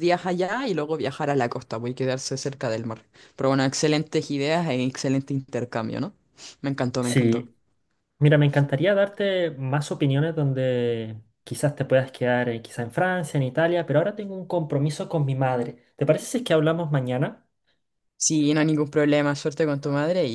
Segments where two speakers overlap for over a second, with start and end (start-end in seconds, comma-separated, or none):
none